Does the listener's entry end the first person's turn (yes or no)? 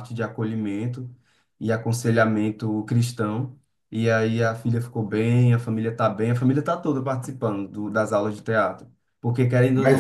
yes